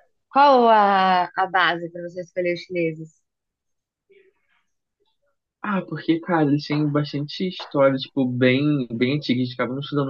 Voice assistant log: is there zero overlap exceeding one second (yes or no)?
yes